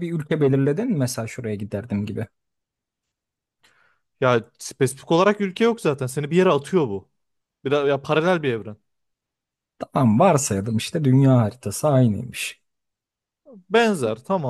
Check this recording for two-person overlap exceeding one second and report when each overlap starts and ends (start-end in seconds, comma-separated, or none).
none